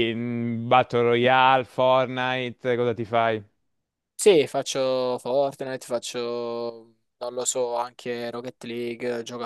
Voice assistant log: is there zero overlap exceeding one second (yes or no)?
yes